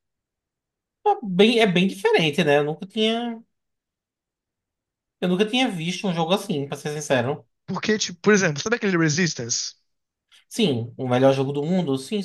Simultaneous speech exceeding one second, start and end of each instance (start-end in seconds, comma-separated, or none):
none